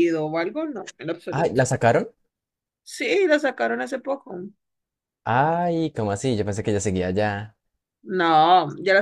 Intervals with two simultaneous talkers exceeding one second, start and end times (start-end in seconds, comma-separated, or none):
none